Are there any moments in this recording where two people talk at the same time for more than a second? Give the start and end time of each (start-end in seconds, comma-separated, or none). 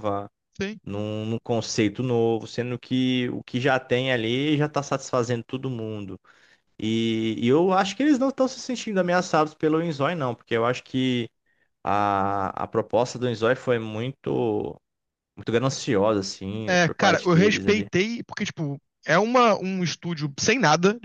16.7-17.9